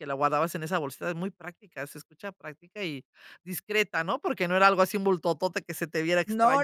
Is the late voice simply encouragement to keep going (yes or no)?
no